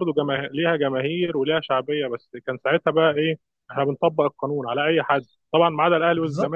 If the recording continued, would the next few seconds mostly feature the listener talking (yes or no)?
no